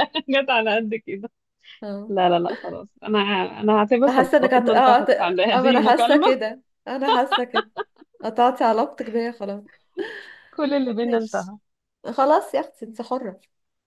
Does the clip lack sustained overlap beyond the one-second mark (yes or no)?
no